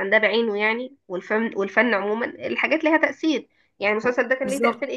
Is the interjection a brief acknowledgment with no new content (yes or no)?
yes